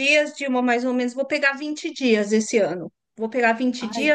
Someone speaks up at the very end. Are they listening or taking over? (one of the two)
listening